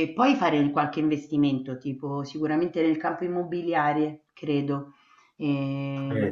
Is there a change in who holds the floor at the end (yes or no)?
yes